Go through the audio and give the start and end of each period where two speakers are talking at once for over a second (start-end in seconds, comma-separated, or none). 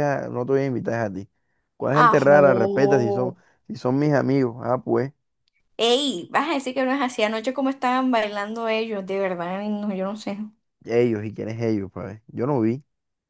1.9-3.4